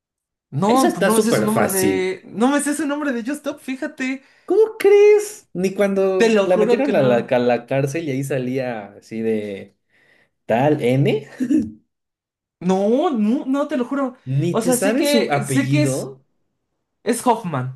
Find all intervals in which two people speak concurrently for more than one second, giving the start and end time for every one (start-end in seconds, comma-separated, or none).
0.7-2.1, 6.2-7.4, 14.3-16.1